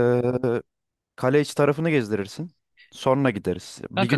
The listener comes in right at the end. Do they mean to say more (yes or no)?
yes